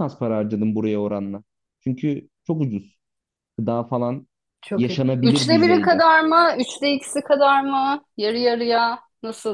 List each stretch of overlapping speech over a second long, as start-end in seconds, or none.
4.8-6.0